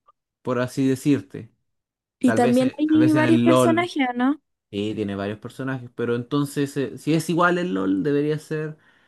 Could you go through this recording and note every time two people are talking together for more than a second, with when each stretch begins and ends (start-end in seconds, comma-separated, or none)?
2.2-3.9